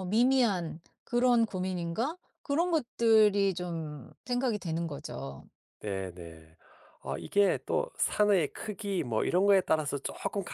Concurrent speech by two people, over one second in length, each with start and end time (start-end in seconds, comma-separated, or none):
none